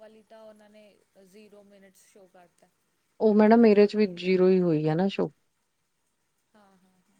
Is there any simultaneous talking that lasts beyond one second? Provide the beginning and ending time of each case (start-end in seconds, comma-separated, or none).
none